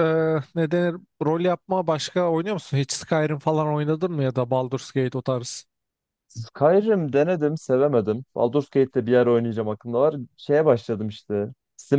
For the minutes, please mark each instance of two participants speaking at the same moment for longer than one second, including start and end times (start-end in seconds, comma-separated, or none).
none